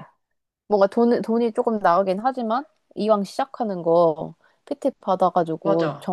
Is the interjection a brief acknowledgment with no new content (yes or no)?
yes